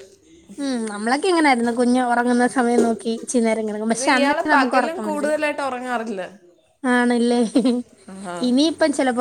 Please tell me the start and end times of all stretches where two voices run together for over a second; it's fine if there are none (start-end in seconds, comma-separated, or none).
3.9-5.3